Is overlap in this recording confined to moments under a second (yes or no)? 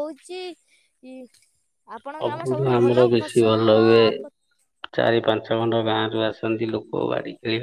no